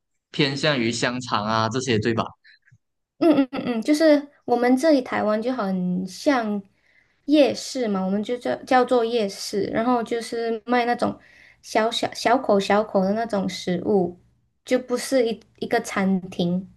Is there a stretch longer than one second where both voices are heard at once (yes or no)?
no